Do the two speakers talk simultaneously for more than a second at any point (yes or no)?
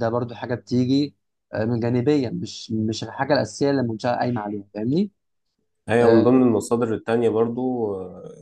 no